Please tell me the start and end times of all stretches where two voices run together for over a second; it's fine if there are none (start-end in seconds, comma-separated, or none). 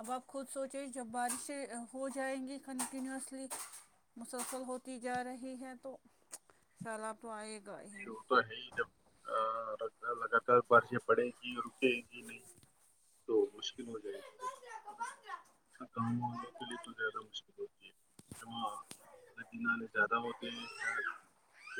none